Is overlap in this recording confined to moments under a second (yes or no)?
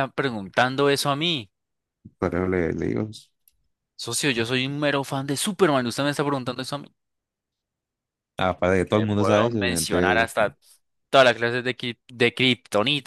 no